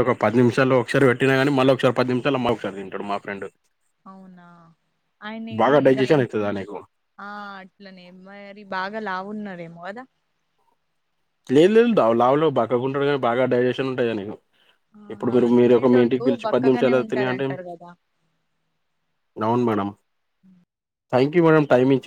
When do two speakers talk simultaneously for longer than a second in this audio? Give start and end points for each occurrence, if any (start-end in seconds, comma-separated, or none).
15.1-17.5